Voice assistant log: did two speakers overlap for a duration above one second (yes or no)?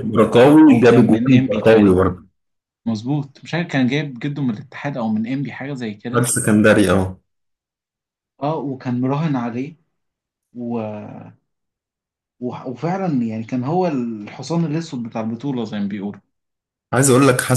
yes